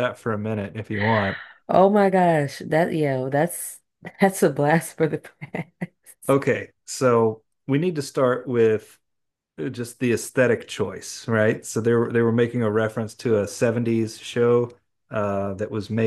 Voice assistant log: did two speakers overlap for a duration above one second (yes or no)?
no